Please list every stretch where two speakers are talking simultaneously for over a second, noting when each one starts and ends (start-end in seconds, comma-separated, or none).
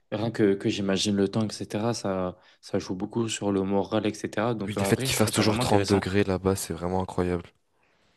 4.7-6.1